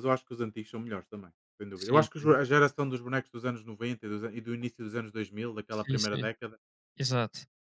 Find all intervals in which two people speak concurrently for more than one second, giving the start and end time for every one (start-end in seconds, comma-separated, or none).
none